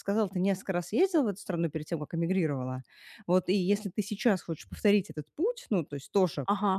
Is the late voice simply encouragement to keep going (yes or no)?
yes